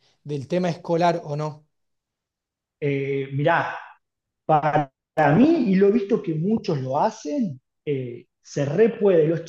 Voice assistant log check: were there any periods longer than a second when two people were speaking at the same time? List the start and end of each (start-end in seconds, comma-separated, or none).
none